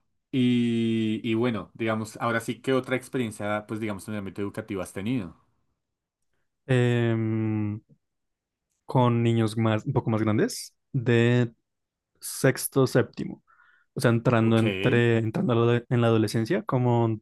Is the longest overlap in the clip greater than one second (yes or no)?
no